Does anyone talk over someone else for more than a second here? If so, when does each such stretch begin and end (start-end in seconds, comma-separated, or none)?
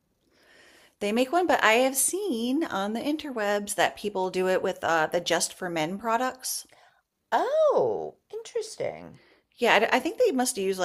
none